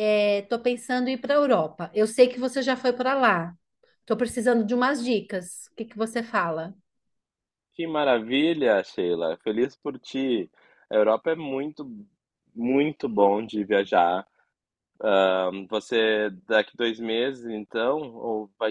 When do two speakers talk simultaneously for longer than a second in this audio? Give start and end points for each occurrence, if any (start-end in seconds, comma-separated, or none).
none